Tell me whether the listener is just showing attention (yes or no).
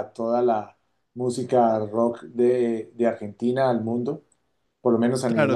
no